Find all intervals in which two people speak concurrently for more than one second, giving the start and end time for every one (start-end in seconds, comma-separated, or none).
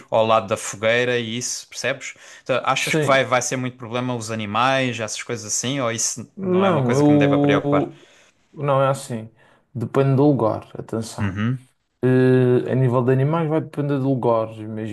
6.3-7.9